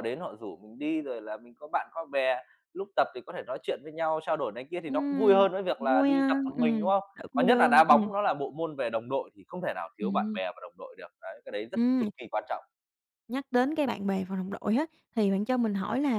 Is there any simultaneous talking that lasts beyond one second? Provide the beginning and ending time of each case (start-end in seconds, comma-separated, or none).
4.8-8.1